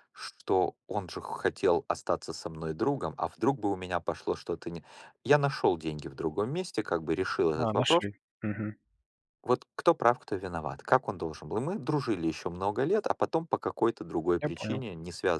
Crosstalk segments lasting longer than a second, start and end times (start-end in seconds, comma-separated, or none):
none